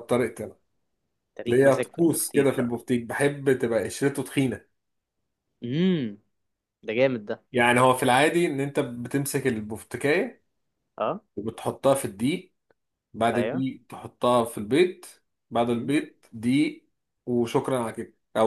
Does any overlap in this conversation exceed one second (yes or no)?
yes